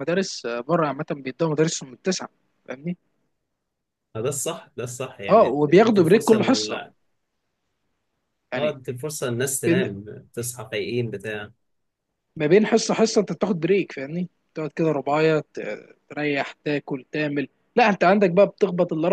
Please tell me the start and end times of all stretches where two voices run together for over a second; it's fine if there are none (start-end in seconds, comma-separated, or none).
5.3-6.8